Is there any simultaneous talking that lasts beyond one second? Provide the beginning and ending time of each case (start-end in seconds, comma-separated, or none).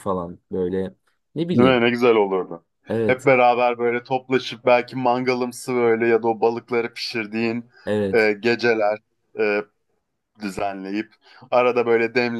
none